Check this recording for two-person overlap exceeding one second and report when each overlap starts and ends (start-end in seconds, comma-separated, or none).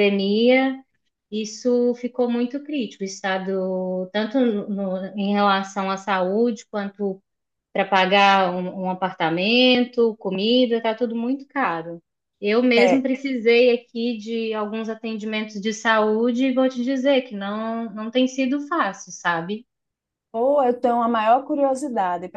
none